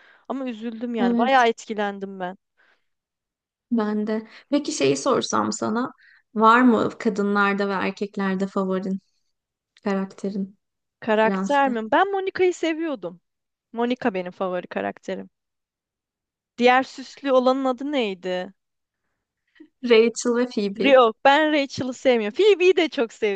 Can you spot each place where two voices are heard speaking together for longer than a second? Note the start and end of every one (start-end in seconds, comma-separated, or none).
none